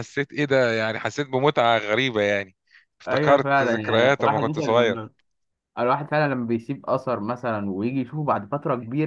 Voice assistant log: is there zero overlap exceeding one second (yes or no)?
no